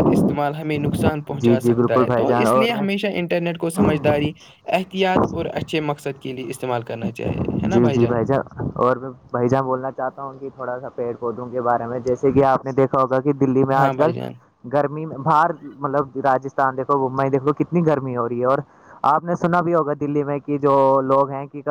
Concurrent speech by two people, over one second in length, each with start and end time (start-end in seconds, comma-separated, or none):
1.4-2.8